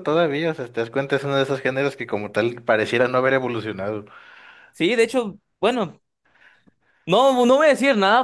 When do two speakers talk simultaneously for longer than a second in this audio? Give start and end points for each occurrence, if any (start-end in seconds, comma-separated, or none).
none